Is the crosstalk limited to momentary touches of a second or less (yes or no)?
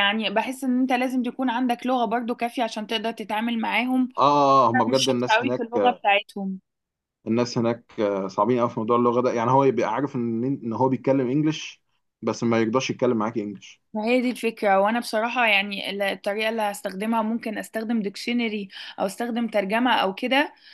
no